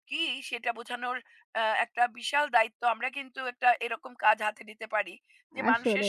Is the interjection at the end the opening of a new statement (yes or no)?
no